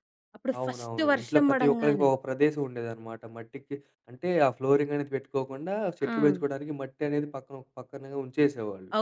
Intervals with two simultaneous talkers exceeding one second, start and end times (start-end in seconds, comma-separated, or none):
0.6-2.1